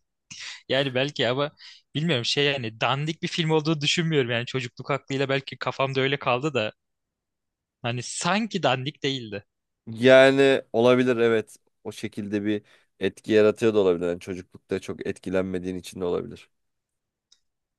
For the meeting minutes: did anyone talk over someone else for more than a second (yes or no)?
no